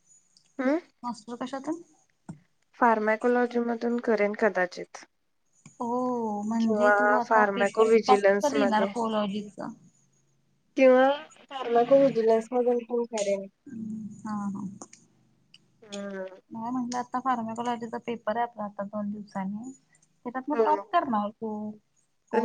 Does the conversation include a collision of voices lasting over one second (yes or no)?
yes